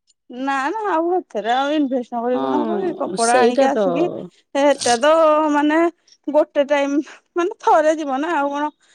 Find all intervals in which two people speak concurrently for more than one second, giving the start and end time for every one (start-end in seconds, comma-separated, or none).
2.4-4.0